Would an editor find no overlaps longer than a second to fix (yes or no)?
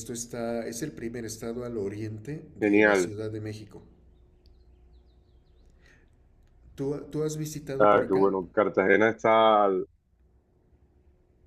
yes